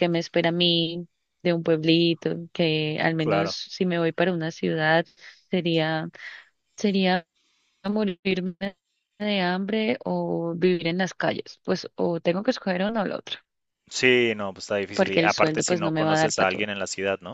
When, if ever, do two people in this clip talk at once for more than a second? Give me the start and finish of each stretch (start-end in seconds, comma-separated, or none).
14.9-16.7